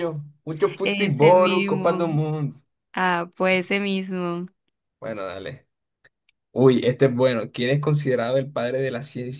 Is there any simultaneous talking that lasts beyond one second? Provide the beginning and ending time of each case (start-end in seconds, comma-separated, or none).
0.8-2.1